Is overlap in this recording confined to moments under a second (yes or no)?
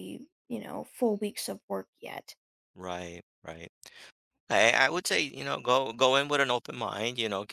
yes